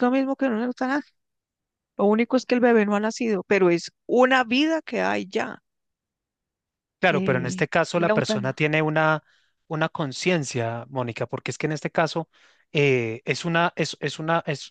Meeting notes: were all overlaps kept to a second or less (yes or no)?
no